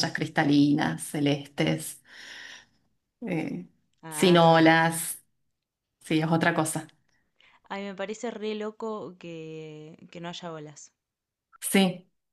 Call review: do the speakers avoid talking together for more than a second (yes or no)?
yes